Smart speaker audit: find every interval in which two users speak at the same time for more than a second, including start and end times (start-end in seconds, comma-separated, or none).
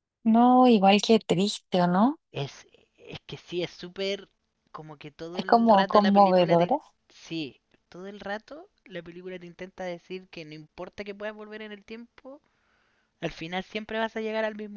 5.3-6.7